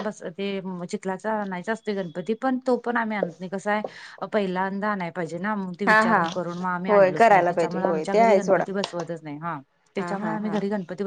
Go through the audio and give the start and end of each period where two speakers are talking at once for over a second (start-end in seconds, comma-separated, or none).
6.9-8.6